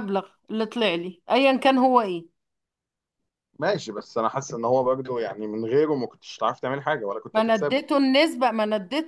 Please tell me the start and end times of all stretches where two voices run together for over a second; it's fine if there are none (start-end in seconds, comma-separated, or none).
none